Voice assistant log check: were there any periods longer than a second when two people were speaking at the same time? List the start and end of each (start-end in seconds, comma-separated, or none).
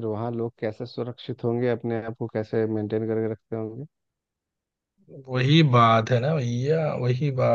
none